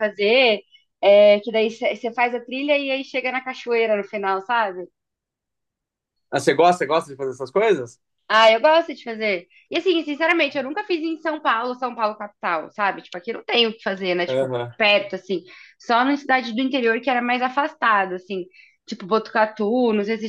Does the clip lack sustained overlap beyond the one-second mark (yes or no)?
yes